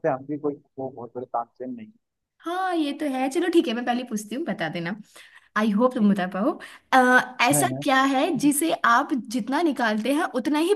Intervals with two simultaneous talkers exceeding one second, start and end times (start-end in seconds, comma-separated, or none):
none